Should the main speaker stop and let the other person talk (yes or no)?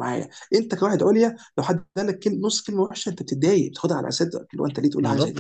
yes